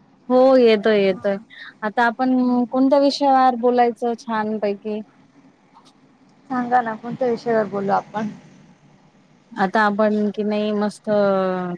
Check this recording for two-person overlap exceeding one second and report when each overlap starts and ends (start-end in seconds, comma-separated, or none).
none